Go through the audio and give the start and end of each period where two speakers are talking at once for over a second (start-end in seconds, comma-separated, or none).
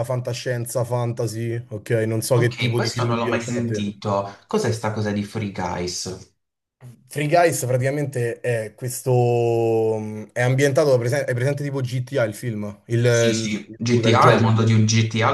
2.4-4.0, 13.0-14.6